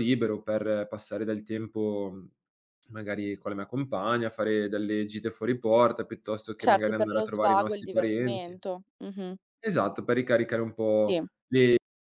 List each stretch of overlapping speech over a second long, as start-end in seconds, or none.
6.6-8.6